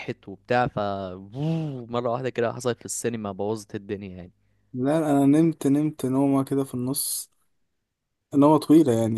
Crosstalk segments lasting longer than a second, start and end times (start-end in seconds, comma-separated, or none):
none